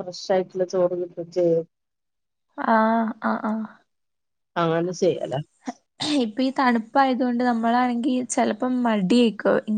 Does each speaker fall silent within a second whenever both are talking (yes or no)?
yes